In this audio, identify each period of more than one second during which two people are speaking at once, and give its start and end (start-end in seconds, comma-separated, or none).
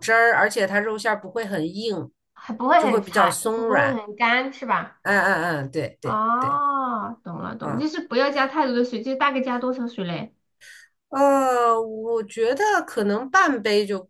2.8-4.0